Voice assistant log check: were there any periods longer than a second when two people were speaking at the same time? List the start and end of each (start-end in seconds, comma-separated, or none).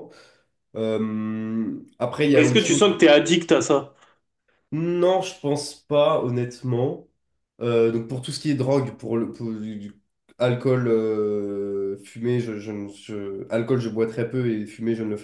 none